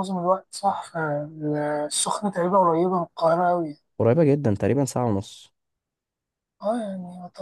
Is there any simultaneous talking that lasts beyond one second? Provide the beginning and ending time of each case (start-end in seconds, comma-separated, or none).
none